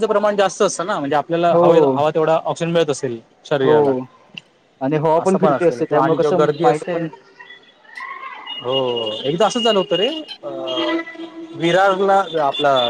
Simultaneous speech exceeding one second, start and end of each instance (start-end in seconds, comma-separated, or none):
5.2-7.0